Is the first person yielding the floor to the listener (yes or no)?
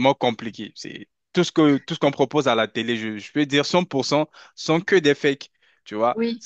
no